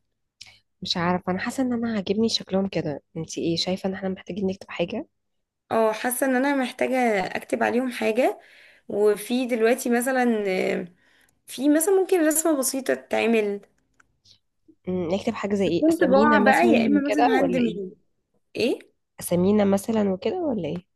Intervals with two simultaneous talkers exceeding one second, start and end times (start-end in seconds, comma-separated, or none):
15.7-17.9